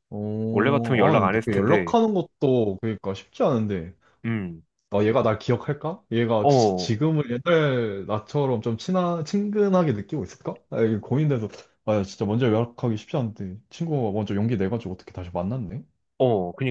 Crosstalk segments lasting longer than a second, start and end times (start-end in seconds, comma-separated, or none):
0.5-1.9